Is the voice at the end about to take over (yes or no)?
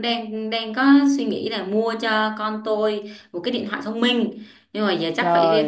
no